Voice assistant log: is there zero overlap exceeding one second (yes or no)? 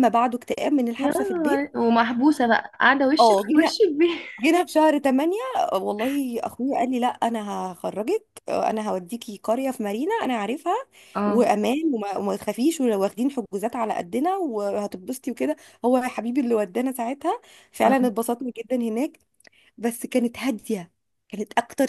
yes